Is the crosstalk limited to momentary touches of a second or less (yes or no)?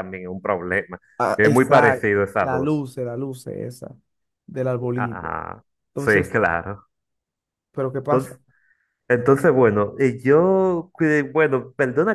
no